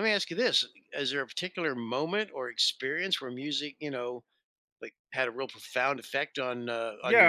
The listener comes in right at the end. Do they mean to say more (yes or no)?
yes